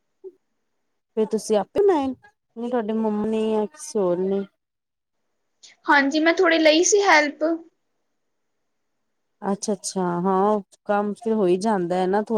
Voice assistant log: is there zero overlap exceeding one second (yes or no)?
yes